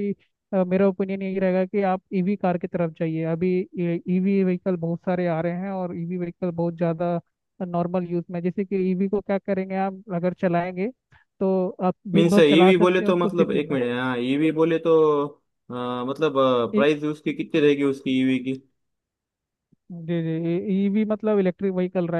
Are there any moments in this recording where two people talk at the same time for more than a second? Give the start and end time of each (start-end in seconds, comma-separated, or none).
12.2-13.8